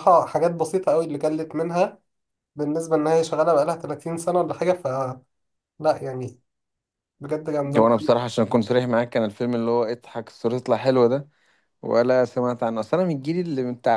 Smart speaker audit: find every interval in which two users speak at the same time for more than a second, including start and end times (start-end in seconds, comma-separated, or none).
none